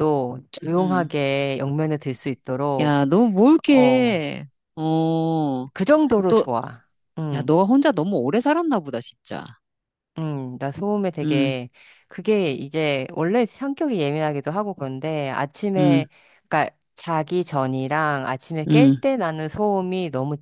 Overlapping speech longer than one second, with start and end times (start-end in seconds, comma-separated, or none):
none